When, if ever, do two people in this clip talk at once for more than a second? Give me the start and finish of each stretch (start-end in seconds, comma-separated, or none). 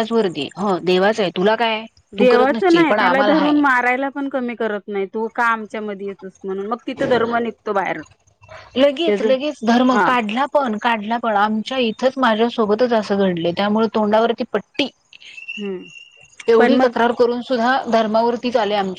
2.2-3.5